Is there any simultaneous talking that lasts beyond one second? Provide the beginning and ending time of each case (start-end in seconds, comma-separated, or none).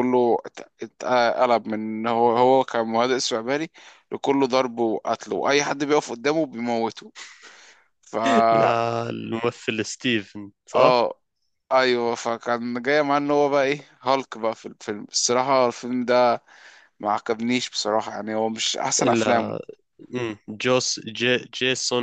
none